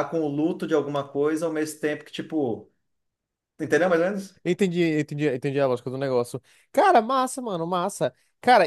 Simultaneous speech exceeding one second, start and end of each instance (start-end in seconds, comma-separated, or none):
none